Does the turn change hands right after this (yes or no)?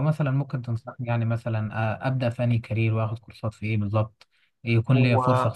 no